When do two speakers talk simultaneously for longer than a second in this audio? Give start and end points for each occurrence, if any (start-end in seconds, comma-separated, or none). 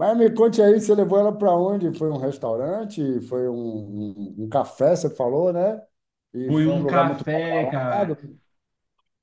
6.5-8.2